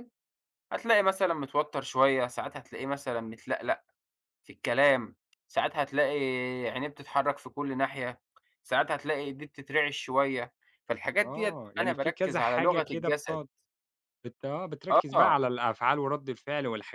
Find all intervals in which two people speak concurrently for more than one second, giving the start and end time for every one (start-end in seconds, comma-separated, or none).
11.2-13.4